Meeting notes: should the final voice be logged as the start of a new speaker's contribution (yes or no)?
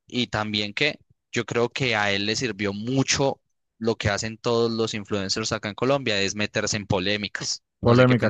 yes